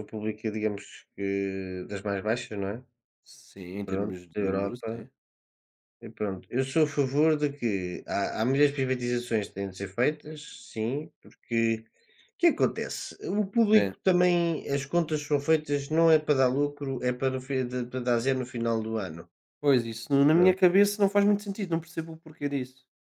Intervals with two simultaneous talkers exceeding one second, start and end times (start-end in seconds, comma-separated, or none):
3.8-5.1